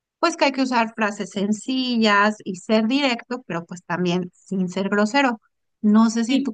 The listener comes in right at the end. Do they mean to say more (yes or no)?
no